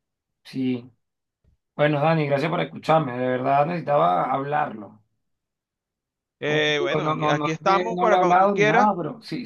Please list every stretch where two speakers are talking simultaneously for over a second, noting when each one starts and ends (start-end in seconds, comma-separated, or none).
6.4-8.9